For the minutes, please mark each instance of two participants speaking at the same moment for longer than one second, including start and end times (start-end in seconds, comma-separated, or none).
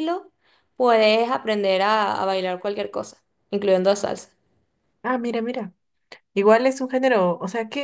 none